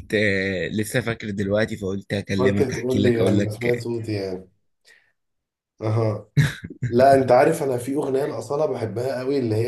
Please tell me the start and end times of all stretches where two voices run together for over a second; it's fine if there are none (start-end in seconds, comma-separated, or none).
2.4-3.8